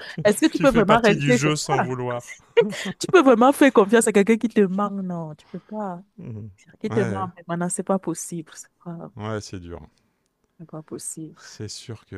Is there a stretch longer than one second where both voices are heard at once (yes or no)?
yes